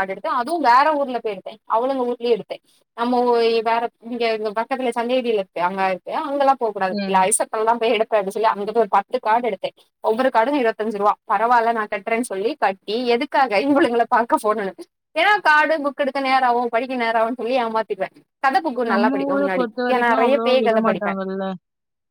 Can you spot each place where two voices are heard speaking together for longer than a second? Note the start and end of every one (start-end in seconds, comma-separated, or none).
18.9-21.2